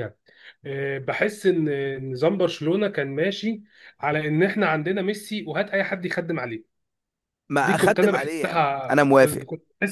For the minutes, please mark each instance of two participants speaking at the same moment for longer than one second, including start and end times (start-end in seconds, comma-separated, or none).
7.6-9.4